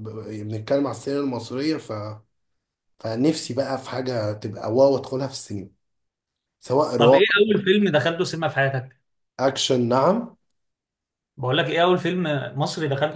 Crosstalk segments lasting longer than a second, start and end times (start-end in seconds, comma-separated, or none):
none